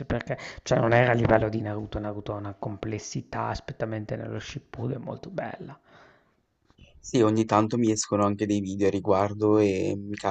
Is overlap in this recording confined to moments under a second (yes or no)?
yes